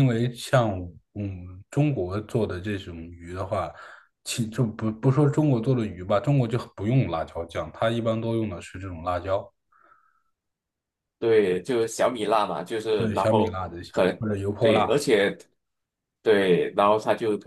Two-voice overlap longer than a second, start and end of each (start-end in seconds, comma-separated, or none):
13.0-15.0